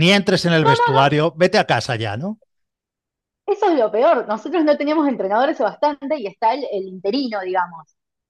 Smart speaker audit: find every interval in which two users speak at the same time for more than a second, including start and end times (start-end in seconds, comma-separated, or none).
none